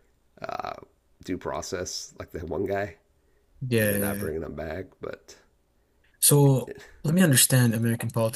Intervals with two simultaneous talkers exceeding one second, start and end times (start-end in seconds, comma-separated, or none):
none